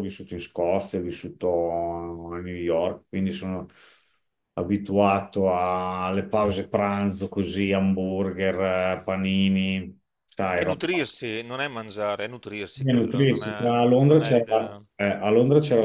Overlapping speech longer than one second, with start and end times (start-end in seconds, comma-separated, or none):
12.8-14.8